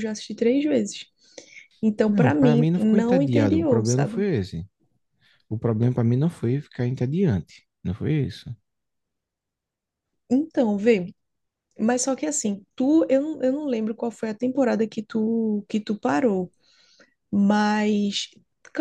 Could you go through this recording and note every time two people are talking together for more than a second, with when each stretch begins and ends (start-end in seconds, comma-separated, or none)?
2.1-4.3